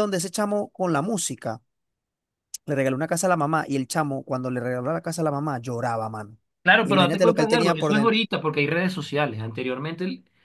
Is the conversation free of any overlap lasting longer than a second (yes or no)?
no